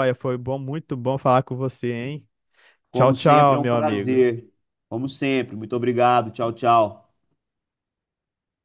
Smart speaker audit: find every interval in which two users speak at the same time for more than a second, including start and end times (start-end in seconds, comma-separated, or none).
2.9-4.2